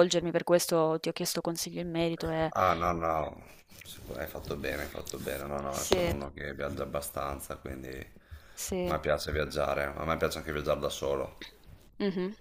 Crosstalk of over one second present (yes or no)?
no